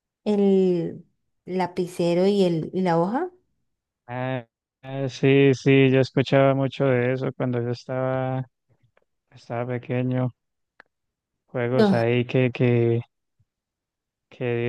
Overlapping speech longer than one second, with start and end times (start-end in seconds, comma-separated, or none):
none